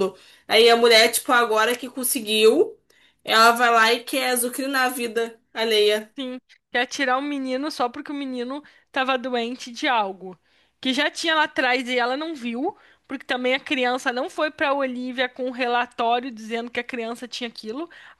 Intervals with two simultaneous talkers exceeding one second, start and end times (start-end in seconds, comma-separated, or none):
none